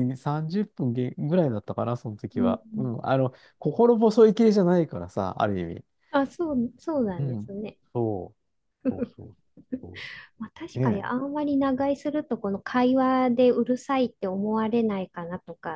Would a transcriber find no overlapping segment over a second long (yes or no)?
yes